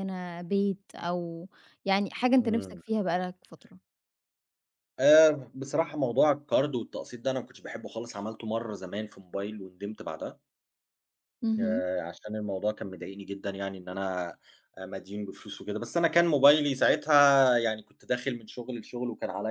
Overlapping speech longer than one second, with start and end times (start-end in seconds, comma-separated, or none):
none